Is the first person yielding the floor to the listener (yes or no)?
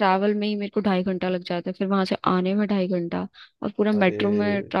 no